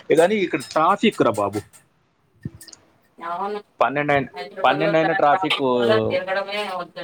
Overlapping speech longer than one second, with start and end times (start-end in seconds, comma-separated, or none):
4.7-6.2